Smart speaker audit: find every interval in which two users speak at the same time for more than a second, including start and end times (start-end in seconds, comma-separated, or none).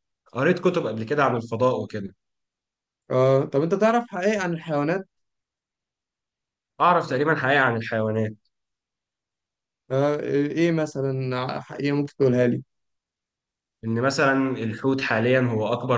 none